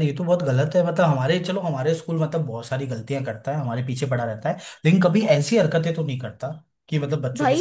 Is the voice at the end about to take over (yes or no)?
yes